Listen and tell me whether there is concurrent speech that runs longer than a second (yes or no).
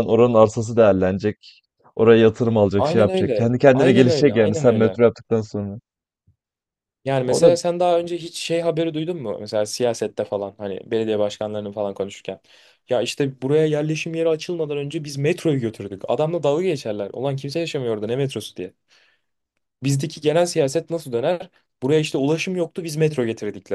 yes